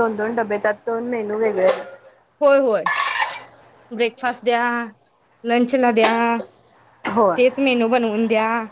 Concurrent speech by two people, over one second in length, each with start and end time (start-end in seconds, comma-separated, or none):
none